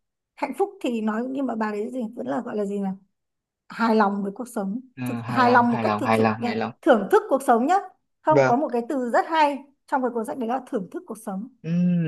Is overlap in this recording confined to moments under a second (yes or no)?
no